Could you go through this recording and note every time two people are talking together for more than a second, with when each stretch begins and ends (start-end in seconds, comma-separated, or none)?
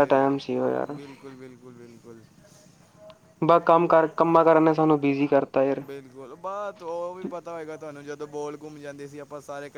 none